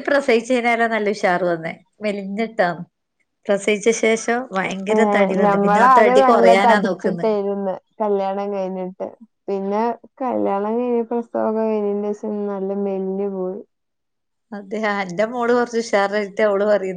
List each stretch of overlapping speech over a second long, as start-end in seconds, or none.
5.4-7.2